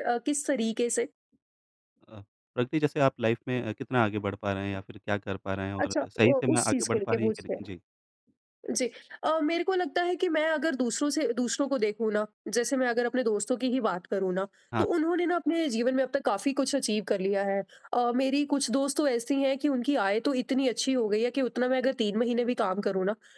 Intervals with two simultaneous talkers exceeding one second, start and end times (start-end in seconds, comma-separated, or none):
5.8-7.6